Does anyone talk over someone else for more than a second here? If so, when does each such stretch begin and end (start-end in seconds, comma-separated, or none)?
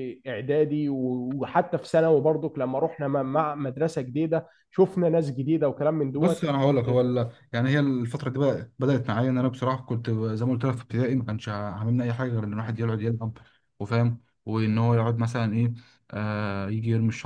none